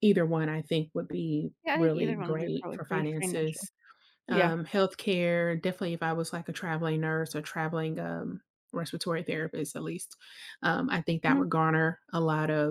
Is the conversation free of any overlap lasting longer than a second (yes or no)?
no